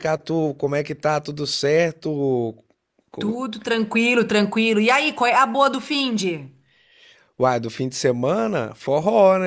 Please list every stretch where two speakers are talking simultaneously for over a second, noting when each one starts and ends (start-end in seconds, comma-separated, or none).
none